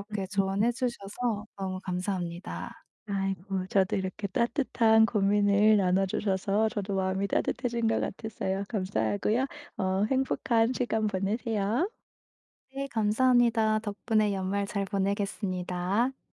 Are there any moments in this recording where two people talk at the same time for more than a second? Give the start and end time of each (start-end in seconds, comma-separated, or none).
none